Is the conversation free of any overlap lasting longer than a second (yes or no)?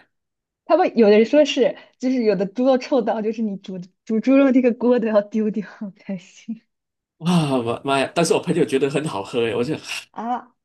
yes